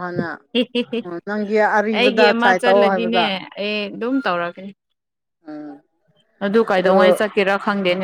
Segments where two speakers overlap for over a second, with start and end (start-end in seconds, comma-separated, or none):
2.0-3.2